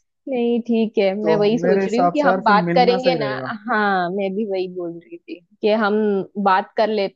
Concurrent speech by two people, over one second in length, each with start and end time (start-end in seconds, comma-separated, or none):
1.2-3.3